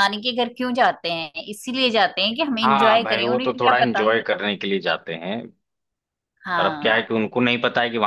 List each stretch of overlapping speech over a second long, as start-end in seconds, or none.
2.6-4.1